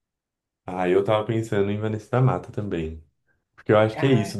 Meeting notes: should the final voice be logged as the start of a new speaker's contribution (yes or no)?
no